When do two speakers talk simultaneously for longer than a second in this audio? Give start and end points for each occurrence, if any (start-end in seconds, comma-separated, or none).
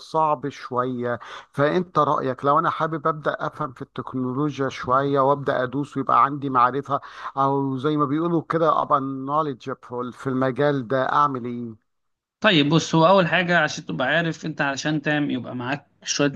none